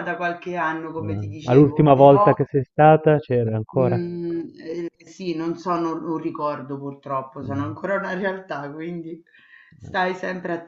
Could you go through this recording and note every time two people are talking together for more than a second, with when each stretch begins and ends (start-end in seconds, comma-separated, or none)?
1.0-2.4